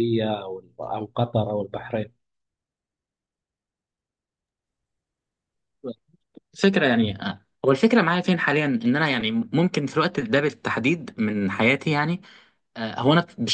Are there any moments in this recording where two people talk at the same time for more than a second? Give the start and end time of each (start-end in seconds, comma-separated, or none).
none